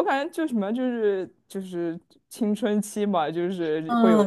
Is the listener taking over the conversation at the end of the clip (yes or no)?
yes